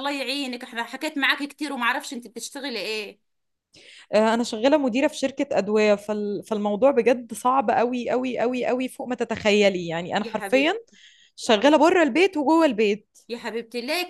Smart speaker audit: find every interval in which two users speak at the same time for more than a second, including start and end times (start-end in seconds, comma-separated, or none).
none